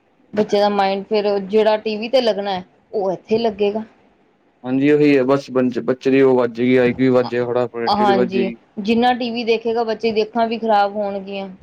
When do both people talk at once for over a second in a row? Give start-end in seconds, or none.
7.2-8.6